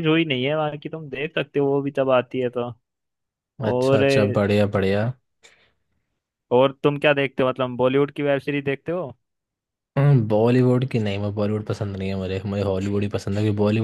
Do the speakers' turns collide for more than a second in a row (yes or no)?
no